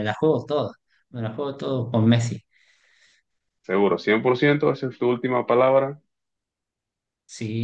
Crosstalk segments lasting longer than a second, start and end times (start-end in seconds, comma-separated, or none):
none